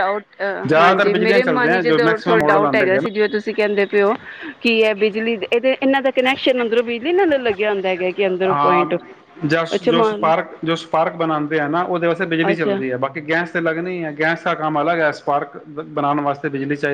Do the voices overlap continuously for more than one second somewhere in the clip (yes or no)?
yes